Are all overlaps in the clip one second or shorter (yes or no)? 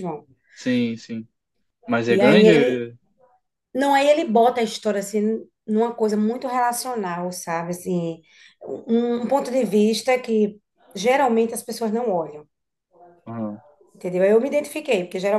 yes